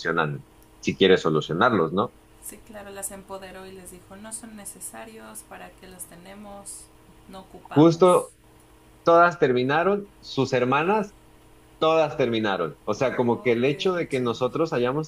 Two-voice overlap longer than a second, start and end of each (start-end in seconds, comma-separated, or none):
13.0-14.3